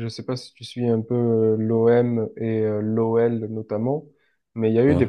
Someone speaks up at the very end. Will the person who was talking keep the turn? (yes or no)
yes